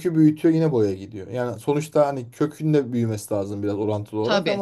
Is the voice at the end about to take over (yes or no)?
no